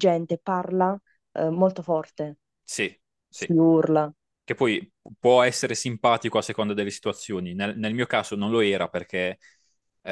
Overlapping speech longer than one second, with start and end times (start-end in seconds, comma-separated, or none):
none